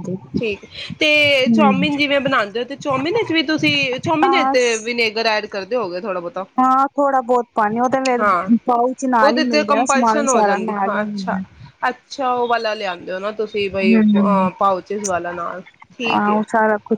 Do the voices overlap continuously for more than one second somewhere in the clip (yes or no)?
yes